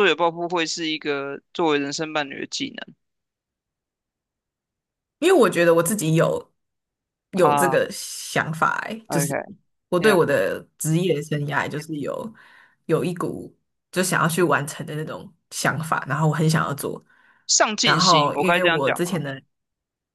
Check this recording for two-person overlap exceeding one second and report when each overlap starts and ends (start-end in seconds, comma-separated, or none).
17.8-19.2